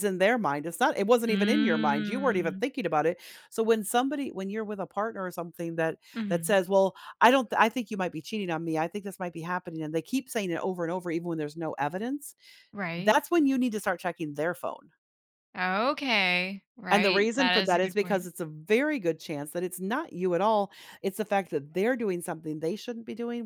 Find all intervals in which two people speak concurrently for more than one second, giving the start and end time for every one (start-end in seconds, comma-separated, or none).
1.3-2.6, 16.9-18.3